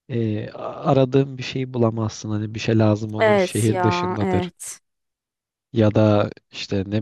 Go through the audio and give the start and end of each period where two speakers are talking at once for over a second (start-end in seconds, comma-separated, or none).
3.2-4.5